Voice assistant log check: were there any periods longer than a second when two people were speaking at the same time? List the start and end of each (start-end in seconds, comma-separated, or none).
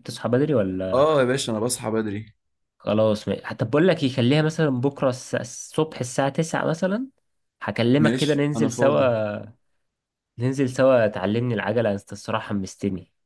8.0-9.2